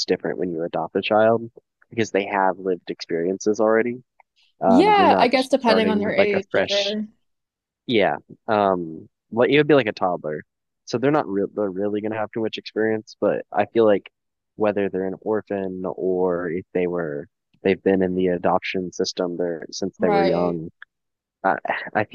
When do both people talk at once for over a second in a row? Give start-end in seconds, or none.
4.7-7.0